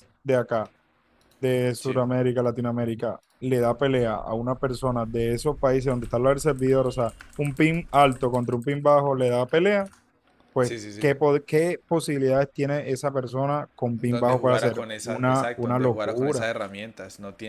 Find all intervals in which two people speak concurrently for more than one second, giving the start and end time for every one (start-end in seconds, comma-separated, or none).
14.1-16.5